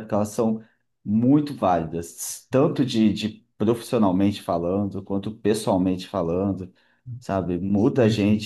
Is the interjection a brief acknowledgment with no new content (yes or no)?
yes